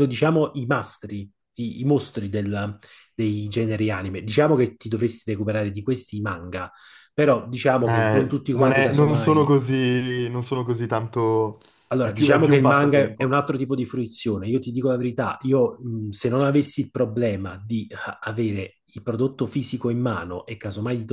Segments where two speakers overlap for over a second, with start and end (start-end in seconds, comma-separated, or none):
7.8-9.5, 12.0-13.3